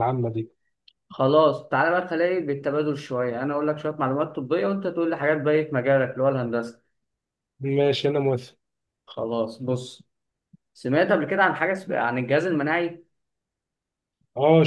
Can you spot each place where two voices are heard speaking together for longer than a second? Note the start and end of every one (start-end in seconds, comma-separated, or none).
none